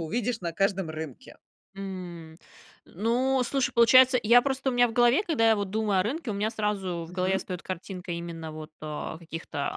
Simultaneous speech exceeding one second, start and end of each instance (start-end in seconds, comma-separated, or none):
none